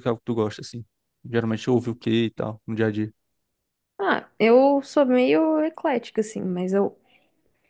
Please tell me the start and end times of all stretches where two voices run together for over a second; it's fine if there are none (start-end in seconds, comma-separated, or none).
none